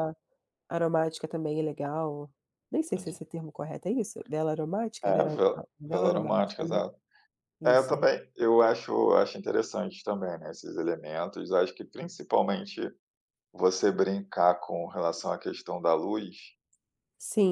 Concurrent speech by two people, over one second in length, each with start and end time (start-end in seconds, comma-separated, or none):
5.0-6.8